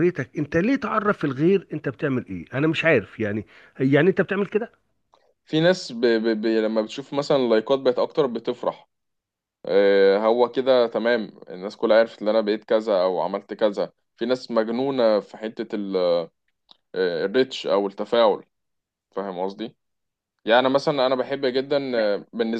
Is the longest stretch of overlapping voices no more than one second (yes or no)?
yes